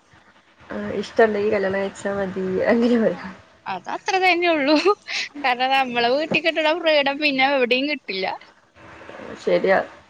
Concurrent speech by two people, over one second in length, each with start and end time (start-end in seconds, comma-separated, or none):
none